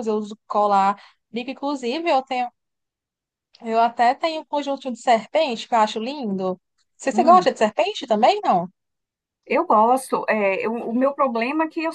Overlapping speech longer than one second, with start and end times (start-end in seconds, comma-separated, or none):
none